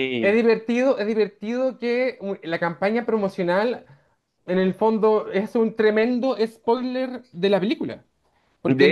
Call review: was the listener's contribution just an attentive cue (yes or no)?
yes